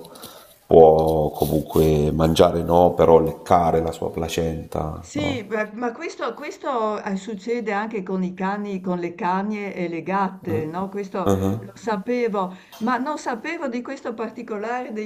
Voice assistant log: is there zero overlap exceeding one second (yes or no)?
yes